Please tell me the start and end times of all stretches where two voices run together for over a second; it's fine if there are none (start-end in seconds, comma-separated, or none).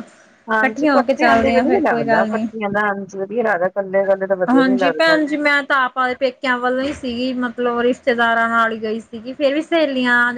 0.5-2.5